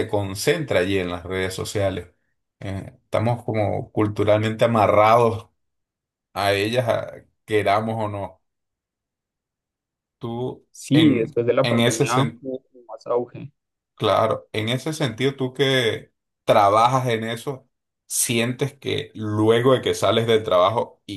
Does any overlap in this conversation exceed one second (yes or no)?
yes